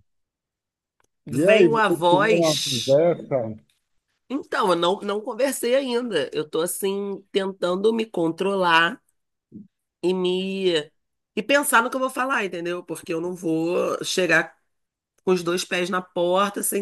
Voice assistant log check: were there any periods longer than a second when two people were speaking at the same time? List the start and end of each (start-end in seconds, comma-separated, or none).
1.3-3.0